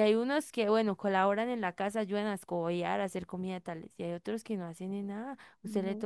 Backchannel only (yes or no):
yes